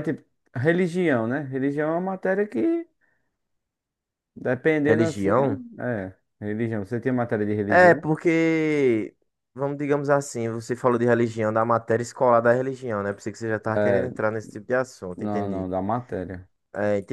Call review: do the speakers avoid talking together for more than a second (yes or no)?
yes